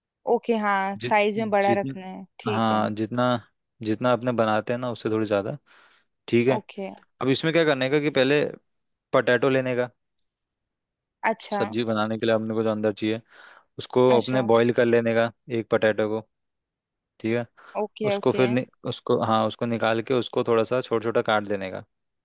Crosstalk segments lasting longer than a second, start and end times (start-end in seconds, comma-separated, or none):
1.0-2.8